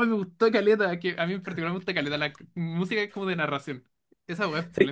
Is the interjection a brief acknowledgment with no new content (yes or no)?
no